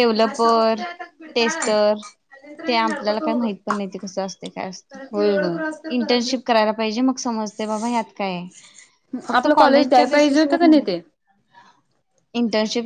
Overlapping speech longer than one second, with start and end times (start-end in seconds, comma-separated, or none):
9.4-10.7